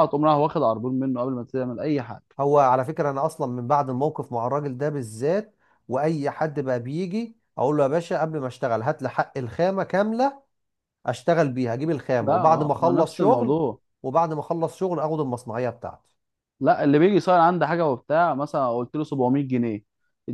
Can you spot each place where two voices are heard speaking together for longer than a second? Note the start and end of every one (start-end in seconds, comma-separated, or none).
12.2-13.6